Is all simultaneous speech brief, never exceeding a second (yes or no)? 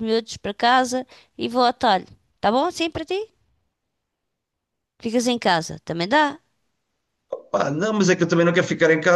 yes